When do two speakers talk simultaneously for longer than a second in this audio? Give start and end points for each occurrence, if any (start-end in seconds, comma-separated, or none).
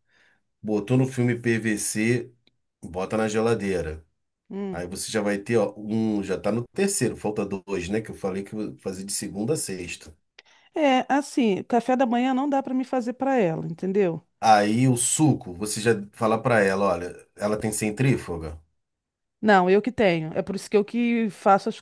none